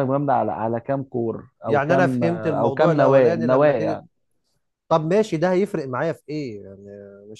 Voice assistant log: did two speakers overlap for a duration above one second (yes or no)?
yes